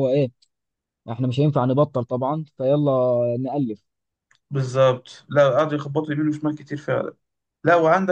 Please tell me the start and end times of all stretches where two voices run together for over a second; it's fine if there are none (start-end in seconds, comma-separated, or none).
none